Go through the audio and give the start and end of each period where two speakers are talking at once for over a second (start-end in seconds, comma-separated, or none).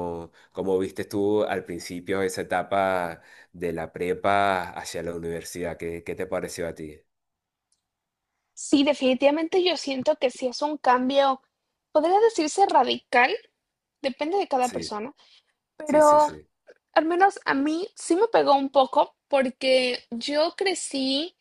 none